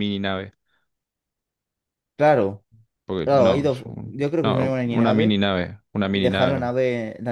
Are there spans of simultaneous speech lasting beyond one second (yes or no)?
yes